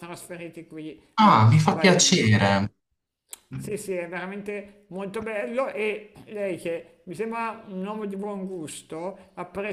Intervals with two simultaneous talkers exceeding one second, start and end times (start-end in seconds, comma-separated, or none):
1.1-2.6